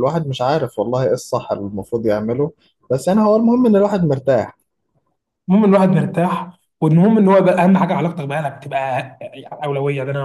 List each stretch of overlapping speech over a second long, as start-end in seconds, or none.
none